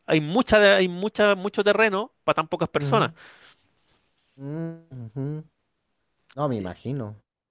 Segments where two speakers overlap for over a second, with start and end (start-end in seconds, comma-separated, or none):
none